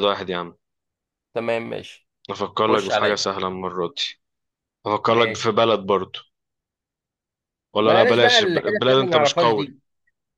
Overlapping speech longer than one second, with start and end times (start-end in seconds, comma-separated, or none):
7.8-9.7